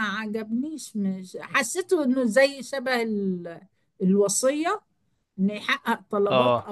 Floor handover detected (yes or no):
no